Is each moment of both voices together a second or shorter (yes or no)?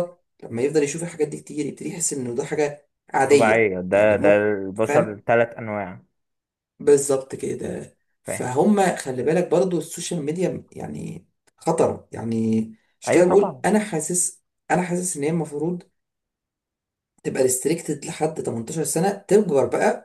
no